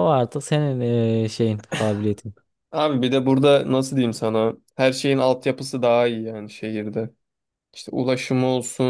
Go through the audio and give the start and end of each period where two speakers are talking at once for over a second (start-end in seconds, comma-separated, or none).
none